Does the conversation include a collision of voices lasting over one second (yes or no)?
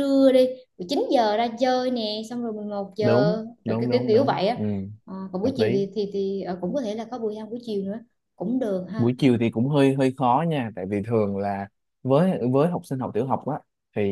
yes